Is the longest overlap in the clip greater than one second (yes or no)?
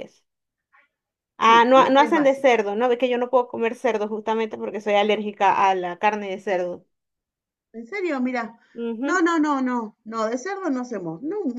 yes